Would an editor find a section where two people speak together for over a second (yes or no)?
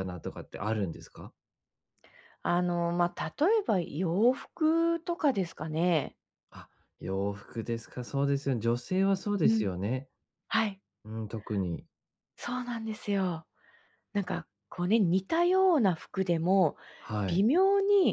no